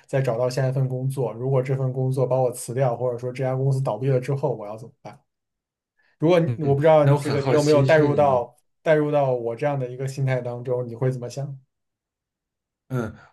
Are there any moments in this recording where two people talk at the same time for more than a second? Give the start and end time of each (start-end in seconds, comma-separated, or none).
6.4-8.5